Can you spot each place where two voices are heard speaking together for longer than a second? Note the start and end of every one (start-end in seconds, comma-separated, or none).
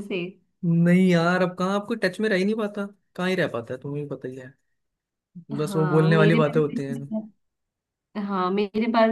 5.6-7.0